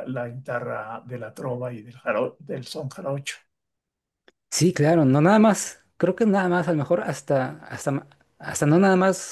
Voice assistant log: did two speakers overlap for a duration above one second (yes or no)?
no